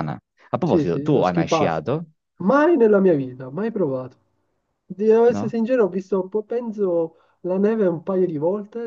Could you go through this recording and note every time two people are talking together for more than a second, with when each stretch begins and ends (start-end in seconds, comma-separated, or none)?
0.6-1.8